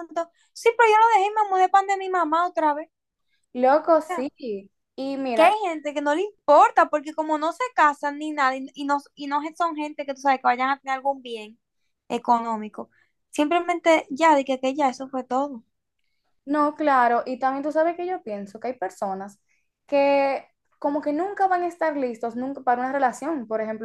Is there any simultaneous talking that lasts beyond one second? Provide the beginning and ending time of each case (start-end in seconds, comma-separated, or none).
none